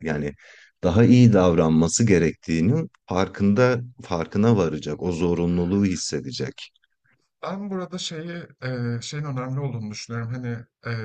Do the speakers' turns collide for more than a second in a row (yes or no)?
no